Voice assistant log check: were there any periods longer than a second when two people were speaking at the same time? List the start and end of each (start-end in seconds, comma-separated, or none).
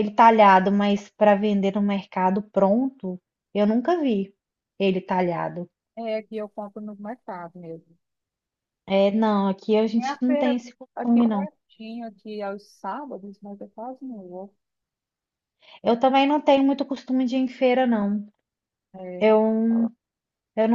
10.0-11.5